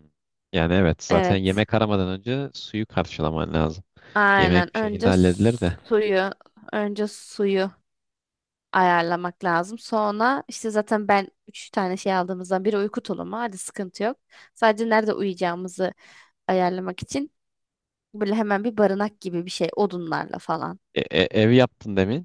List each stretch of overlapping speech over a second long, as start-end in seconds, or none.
4.4-5.8